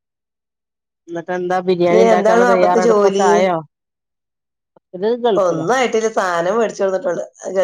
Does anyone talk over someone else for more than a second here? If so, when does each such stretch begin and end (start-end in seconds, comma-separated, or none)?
1.9-3.3